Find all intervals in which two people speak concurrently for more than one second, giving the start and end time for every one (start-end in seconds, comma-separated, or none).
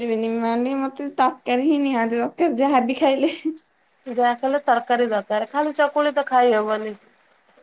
none